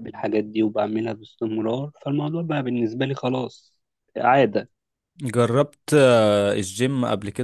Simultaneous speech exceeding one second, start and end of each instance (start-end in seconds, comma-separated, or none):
none